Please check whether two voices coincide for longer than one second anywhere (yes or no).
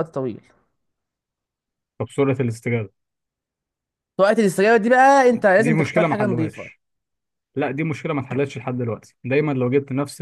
yes